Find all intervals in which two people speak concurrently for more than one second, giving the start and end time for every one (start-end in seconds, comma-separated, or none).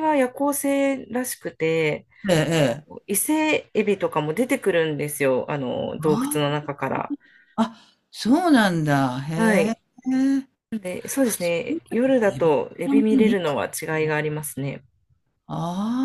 11.2-13.6